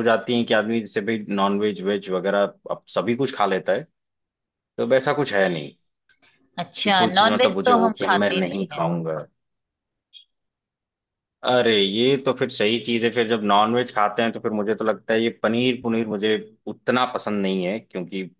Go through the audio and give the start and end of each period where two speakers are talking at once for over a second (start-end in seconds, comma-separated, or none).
6.8-8.6